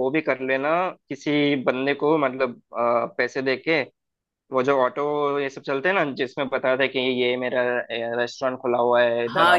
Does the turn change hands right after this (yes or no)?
yes